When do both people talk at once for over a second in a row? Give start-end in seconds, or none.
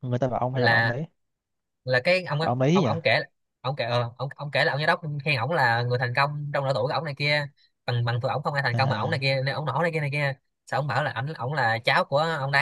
none